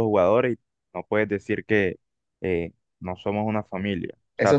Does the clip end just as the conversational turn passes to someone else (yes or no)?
yes